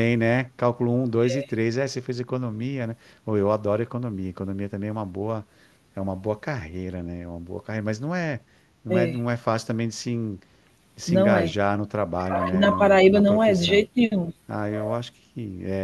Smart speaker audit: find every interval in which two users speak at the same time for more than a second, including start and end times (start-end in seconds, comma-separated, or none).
12.3-13.8